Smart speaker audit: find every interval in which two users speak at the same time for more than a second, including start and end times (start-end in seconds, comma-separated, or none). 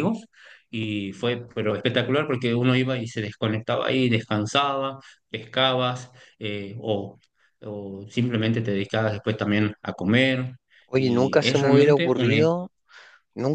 10.9-12.3